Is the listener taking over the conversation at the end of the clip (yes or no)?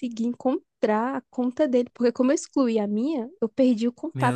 no